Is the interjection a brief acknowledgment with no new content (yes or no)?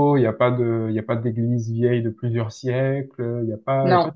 yes